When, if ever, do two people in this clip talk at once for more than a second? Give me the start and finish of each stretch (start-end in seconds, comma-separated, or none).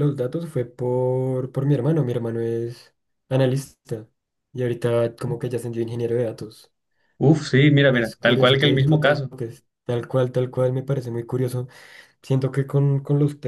7.9-9.3